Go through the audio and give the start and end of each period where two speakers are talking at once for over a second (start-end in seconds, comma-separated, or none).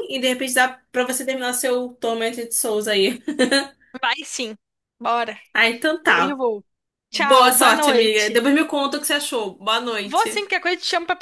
7.1-8.4